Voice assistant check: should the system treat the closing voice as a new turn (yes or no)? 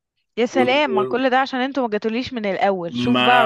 yes